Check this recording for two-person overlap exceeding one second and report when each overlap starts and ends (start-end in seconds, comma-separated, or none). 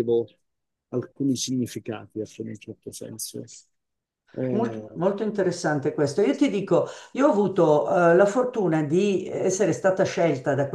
none